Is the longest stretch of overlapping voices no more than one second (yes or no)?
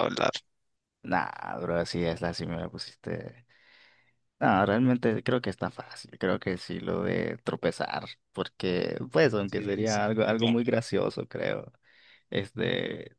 no